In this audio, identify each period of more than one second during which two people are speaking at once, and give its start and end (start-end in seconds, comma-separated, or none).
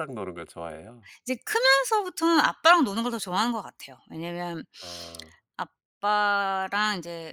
none